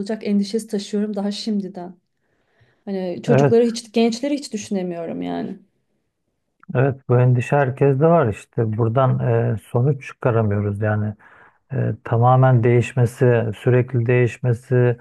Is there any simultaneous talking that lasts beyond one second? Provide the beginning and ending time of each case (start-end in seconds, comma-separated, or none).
none